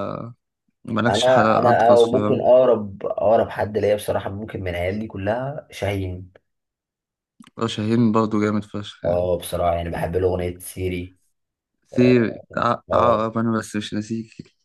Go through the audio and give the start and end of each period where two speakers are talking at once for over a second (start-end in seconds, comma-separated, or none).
1.1-2.4